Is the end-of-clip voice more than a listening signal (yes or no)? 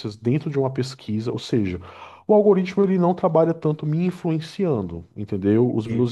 no